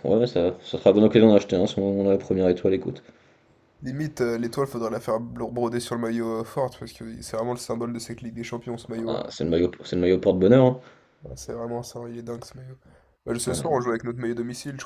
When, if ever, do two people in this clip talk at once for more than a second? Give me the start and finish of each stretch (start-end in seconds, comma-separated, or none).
none